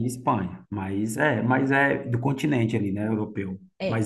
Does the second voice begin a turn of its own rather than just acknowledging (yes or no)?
no